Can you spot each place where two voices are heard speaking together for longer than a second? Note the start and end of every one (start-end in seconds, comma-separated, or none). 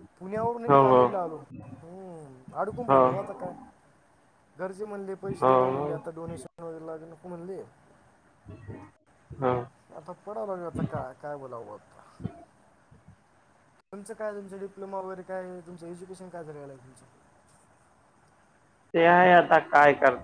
none